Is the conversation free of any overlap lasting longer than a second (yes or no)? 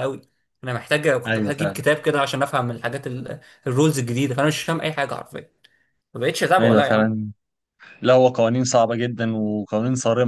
yes